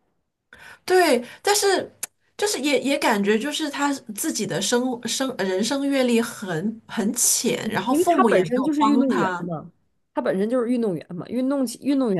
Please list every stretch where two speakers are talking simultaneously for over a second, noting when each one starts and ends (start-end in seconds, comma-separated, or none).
7.6-9.4